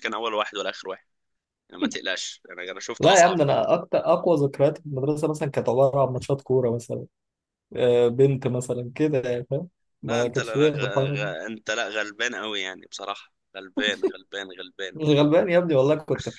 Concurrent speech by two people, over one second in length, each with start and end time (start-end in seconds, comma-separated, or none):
10.1-11.3